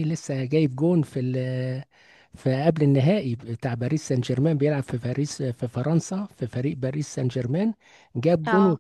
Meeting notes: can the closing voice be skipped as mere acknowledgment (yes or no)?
yes